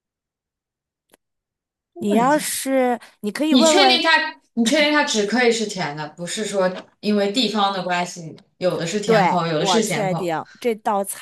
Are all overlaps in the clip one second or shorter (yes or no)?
no